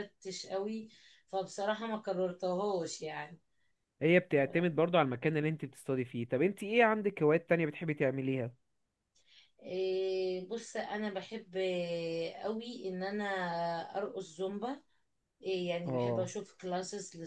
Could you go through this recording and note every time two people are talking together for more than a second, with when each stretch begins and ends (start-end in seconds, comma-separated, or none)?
none